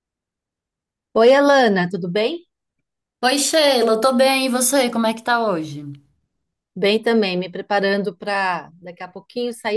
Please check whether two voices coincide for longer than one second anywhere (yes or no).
no